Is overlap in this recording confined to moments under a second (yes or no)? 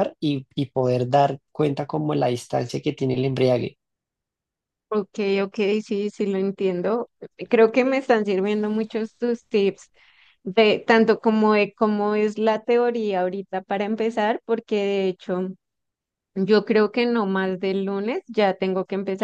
yes